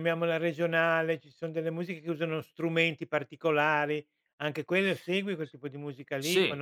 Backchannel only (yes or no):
no